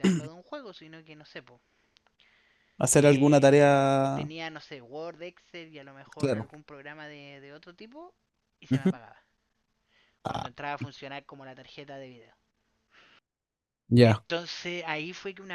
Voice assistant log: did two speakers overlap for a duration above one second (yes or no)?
yes